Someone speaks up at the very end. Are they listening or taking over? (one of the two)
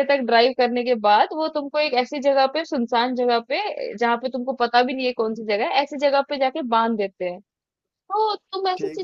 listening